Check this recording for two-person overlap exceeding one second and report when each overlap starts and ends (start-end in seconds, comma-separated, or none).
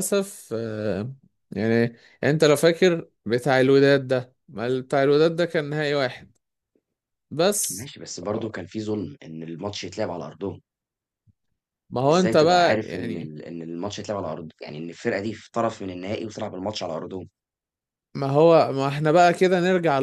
12.1-13.3